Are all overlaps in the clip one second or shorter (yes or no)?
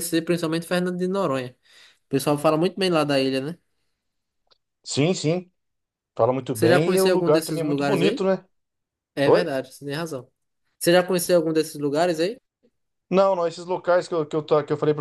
no